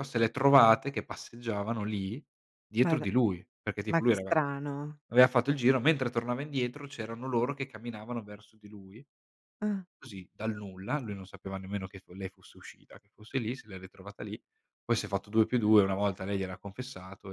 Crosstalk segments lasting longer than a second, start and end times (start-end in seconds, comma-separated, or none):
none